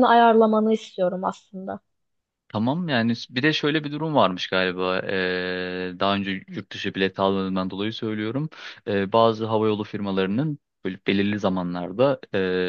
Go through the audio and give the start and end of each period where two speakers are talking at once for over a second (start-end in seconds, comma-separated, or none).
none